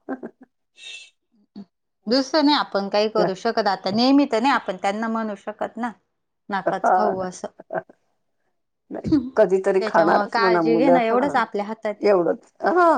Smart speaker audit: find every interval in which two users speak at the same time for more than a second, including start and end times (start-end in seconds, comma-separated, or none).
9.8-11.3